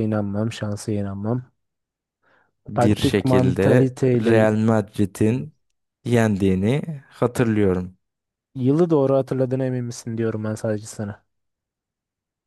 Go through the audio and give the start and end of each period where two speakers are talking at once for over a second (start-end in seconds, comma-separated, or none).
2.8-4.3